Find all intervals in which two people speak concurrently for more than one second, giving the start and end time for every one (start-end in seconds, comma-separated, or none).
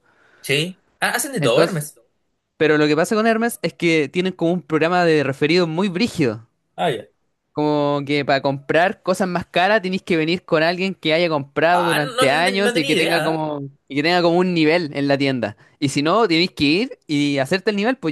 11.7-13.4